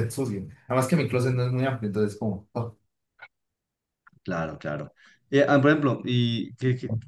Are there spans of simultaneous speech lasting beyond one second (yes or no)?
no